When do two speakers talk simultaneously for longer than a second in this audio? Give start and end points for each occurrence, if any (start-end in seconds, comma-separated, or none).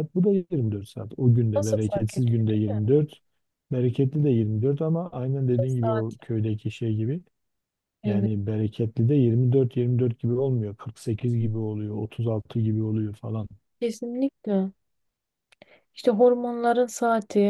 1.6-2.9